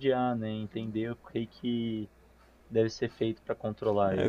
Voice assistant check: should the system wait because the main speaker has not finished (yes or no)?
no